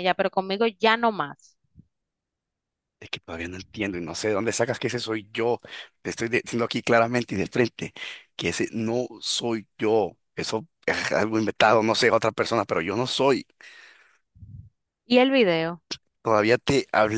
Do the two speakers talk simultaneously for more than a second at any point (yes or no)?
no